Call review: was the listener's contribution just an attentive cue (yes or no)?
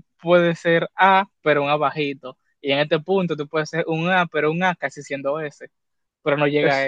yes